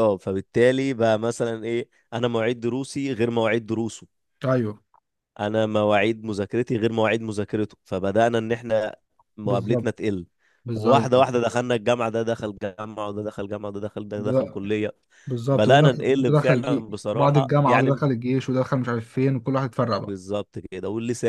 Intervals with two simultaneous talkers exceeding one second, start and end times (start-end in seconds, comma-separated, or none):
15.5-18.0